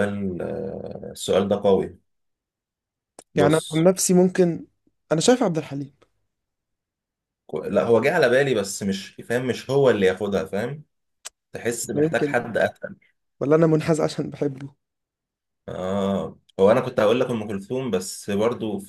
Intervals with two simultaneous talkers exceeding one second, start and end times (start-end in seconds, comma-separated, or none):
none